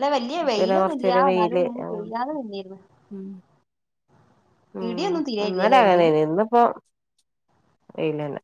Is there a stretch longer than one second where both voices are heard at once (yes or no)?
yes